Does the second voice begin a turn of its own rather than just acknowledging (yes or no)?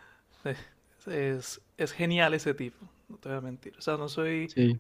no